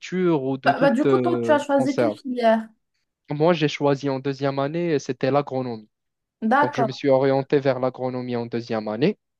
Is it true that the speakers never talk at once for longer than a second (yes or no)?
no